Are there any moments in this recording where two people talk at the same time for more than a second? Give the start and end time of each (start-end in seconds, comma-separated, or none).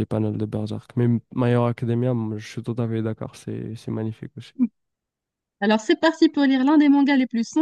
none